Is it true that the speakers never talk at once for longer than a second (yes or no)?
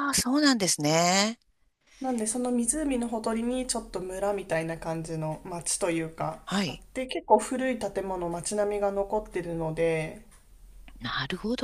yes